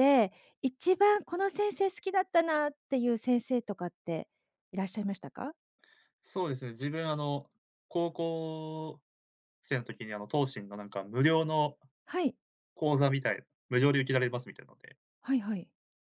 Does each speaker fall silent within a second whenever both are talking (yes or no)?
yes